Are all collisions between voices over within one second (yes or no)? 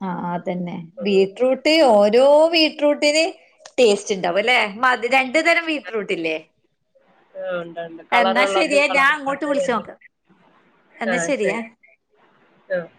no